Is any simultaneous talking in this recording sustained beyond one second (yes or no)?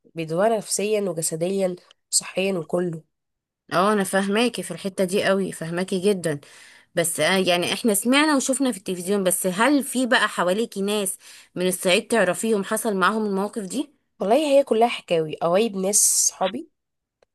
no